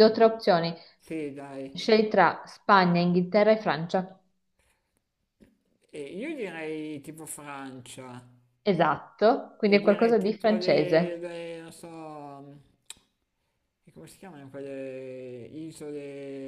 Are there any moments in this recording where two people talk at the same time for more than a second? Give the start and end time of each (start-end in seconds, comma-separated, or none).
9.7-11.3